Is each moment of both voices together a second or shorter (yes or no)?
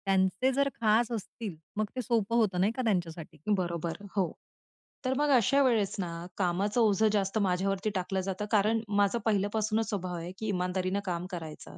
yes